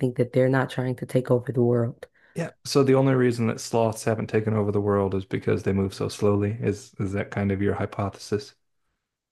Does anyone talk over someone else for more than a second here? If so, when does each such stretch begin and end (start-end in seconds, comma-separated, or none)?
none